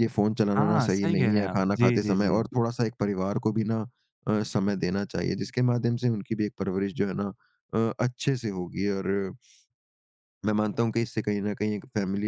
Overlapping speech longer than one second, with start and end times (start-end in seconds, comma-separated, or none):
0.6-2.4